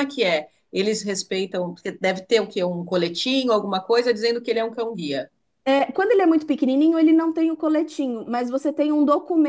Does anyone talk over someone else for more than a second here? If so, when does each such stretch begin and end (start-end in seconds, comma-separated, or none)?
none